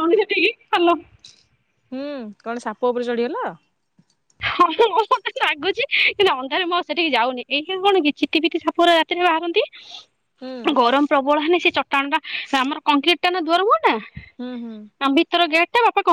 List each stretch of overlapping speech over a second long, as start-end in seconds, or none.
none